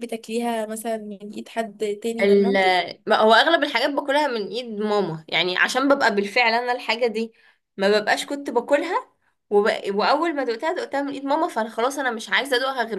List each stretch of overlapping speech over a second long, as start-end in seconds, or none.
none